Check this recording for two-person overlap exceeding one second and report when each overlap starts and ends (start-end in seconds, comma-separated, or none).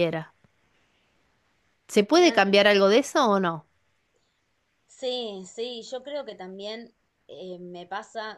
none